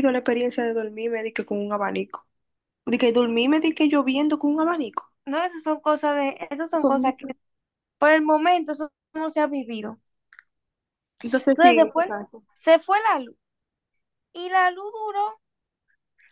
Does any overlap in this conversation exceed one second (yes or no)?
no